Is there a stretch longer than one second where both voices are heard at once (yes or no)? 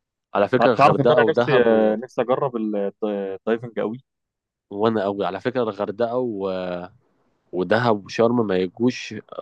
yes